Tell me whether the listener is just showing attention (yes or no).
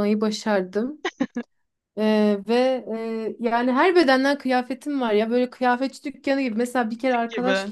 yes